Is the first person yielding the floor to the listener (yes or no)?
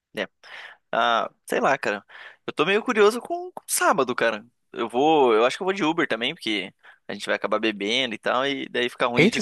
yes